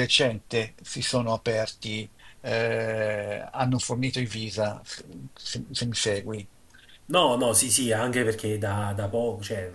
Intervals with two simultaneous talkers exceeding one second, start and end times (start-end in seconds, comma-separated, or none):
none